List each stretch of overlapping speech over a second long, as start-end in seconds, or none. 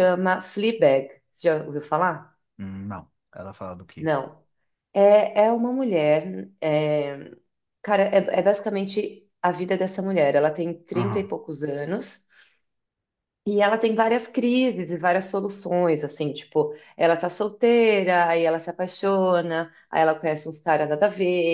none